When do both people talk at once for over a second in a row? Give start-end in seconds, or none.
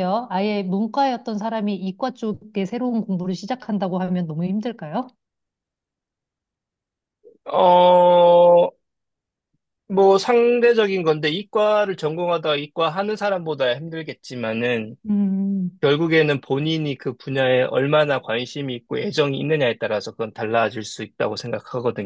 none